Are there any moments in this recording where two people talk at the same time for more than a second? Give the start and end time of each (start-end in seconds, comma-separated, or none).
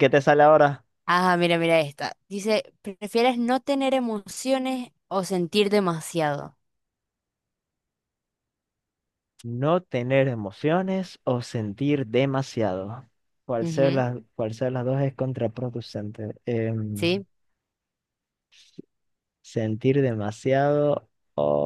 none